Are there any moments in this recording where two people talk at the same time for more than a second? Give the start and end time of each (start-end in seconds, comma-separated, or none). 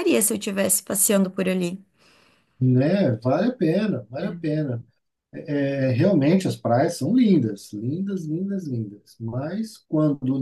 none